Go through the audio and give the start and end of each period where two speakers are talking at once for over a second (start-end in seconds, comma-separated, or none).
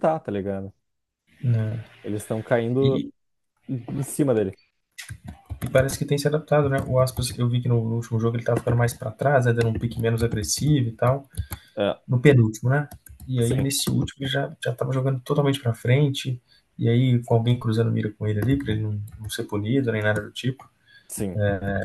none